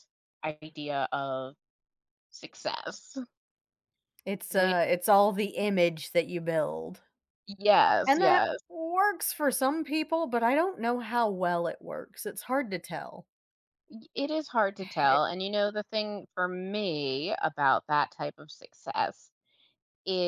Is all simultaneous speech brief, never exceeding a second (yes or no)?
yes